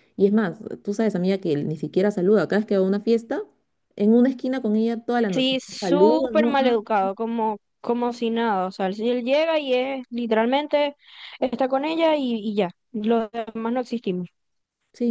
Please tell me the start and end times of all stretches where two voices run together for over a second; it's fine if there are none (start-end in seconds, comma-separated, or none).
5.3-6.5